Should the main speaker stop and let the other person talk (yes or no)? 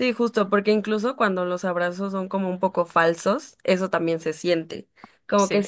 no